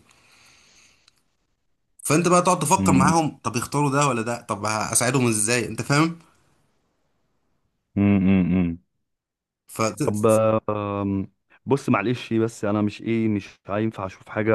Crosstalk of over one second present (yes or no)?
no